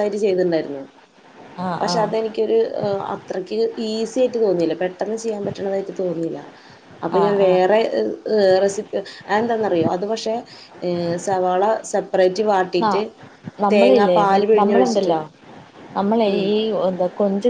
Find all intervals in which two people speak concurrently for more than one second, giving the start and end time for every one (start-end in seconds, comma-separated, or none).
13.7-15.1